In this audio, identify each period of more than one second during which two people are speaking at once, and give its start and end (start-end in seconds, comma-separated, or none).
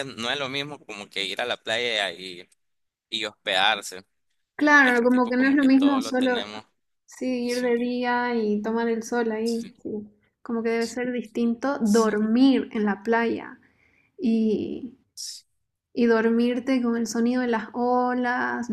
4.8-6.5